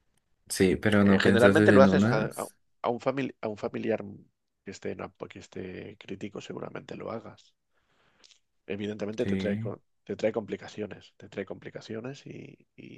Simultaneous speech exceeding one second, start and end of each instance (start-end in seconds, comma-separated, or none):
1.0-2.3